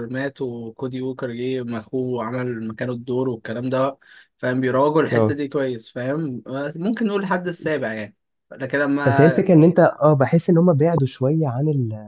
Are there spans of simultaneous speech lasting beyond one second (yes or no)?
no